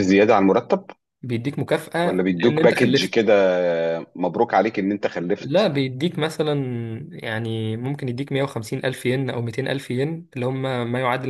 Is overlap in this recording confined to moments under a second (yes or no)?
no